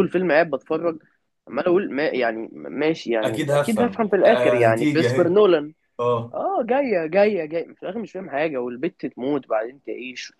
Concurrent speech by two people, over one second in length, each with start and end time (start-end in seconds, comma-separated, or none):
3.2-5.3